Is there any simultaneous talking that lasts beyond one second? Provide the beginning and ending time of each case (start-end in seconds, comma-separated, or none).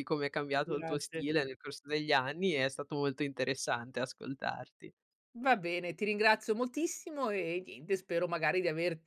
none